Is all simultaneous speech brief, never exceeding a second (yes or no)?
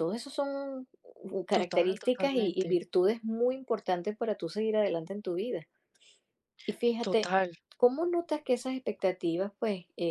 no